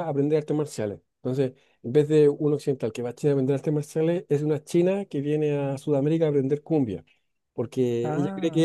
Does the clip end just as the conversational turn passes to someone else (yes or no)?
no